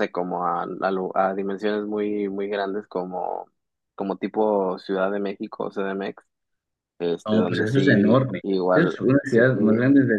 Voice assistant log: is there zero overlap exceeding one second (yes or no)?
no